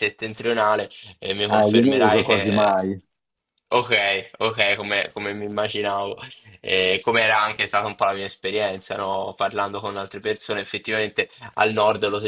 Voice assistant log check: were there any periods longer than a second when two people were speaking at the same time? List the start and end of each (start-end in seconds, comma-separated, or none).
1.5-2.8